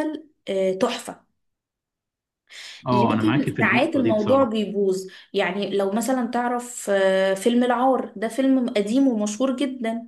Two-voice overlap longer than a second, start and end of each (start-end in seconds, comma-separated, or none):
2.9-4.5